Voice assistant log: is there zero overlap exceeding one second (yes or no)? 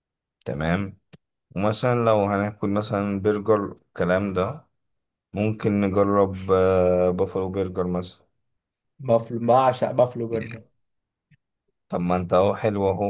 yes